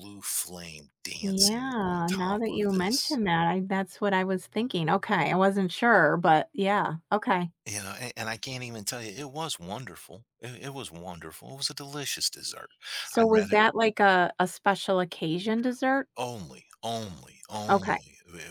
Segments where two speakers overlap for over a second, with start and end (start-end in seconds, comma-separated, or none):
1.2-3.2